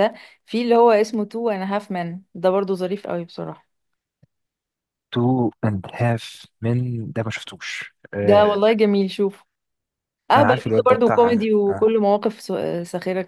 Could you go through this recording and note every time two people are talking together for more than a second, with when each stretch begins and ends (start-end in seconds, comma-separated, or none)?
10.3-11.9